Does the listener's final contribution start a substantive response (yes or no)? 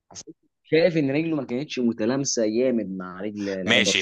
yes